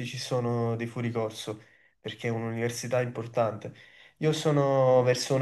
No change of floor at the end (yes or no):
yes